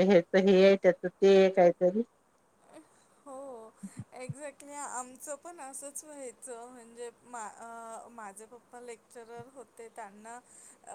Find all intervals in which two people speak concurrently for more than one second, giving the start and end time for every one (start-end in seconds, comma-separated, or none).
none